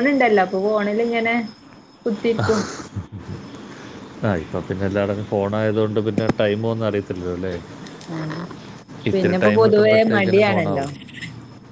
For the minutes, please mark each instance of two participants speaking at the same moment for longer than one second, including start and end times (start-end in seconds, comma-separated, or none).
9.1-10.8